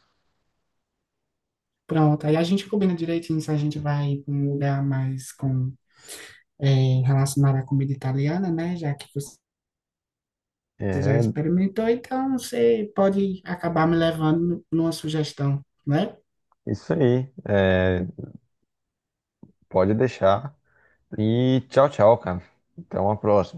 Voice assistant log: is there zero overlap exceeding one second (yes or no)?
yes